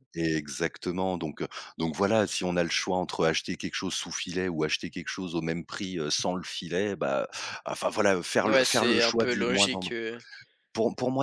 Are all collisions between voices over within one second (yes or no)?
no